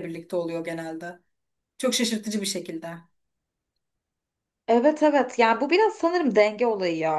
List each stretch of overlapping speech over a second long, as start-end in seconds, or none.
none